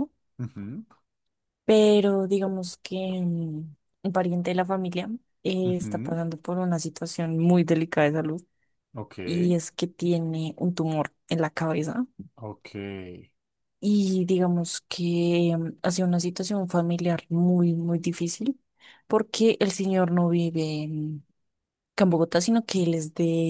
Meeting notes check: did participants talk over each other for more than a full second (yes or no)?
no